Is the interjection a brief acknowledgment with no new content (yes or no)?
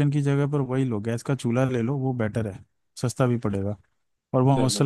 yes